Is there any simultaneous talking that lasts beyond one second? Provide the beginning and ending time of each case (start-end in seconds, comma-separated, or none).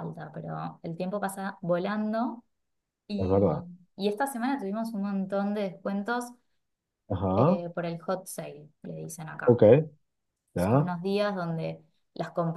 none